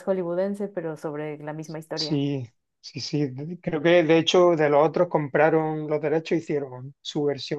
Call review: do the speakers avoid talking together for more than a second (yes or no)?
yes